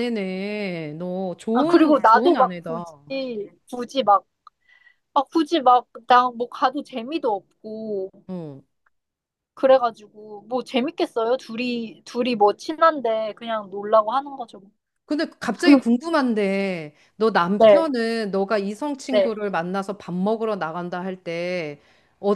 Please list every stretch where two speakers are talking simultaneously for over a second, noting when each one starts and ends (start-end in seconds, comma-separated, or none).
1.5-2.8